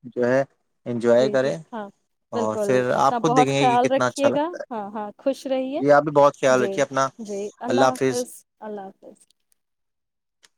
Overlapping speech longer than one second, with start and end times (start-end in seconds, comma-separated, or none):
2.4-4.7